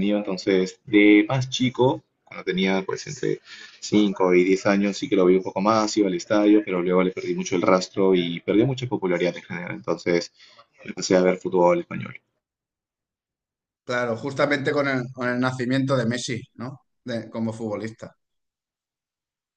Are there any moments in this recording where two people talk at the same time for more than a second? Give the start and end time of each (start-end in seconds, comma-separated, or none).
none